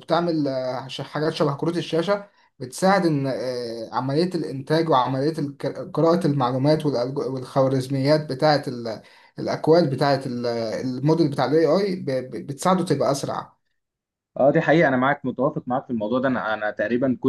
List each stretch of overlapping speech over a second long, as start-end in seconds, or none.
none